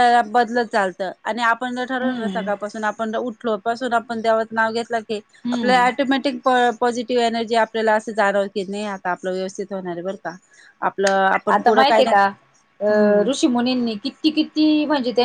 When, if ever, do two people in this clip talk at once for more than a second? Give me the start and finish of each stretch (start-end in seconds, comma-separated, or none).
none